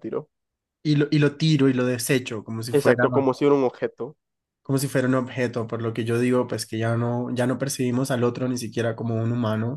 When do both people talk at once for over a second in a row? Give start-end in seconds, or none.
none